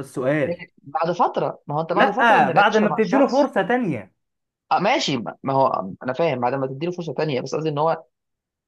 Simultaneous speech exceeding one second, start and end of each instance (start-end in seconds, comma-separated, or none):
1.9-3.5